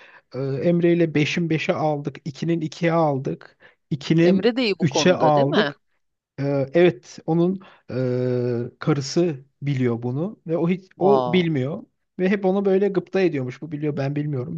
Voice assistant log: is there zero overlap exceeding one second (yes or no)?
no